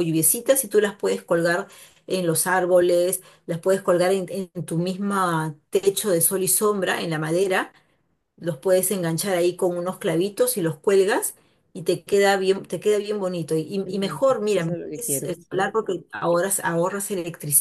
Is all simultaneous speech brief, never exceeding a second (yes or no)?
no